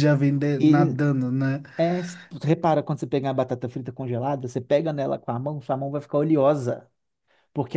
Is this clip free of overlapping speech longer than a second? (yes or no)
yes